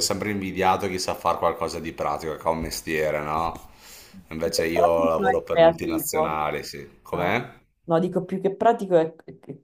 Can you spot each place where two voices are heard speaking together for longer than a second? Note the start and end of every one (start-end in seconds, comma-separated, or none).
4.4-6.4